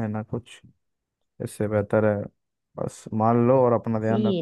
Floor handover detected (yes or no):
no